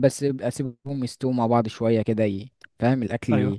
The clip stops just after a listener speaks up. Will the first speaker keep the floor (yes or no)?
yes